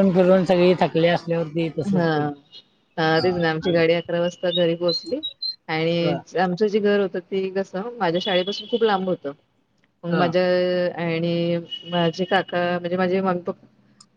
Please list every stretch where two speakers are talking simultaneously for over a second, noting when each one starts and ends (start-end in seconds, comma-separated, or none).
none